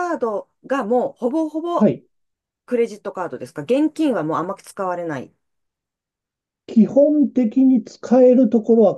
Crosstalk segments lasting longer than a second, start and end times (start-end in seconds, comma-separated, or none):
none